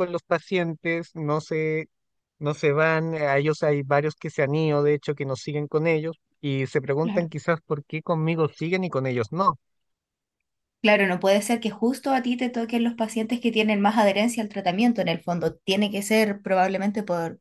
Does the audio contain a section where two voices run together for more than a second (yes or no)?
no